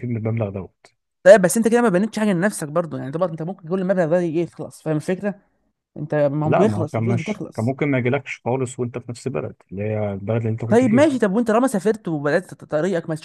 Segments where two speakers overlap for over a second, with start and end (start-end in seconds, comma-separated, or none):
6.4-7.8